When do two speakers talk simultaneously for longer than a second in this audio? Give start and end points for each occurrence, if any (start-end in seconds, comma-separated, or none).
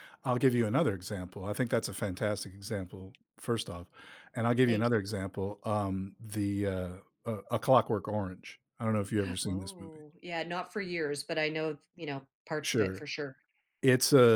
none